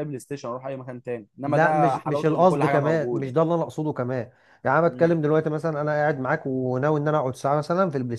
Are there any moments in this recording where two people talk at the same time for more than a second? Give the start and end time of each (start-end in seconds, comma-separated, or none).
1.4-3.3